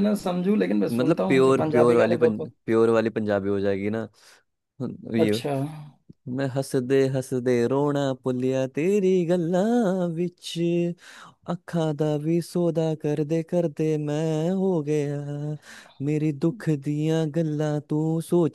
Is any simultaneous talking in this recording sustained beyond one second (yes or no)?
yes